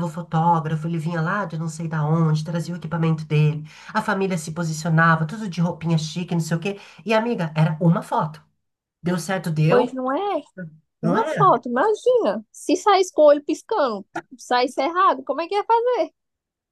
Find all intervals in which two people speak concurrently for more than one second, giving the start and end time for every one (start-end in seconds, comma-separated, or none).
none